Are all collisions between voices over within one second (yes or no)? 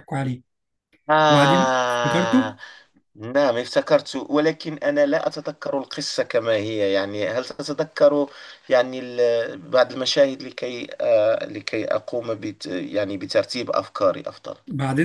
no